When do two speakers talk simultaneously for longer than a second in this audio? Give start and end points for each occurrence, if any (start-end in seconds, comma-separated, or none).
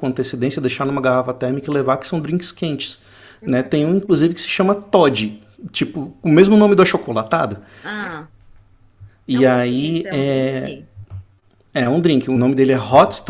9.3-10.8